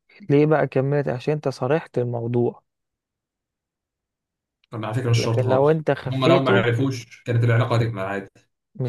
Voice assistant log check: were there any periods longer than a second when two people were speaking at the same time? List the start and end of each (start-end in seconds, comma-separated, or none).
5.2-6.7